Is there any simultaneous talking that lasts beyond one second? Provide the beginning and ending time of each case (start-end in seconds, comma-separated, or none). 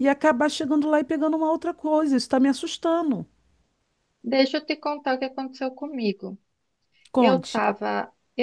none